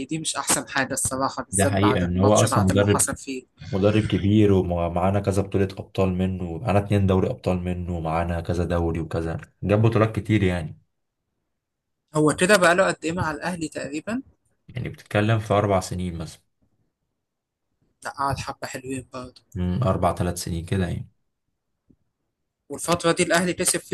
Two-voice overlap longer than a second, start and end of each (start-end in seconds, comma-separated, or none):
1.5-3.1